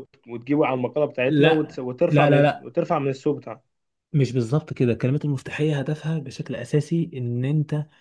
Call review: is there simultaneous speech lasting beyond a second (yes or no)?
yes